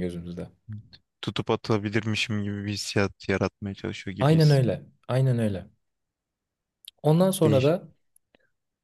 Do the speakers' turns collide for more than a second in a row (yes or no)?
no